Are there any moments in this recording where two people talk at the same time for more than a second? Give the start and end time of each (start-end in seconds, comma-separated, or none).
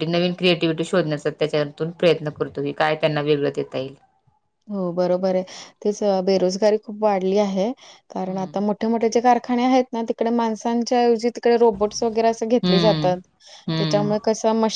none